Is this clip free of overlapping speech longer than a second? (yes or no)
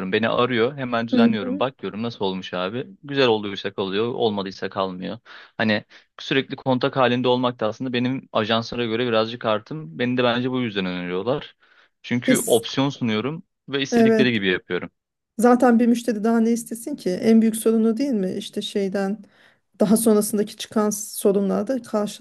yes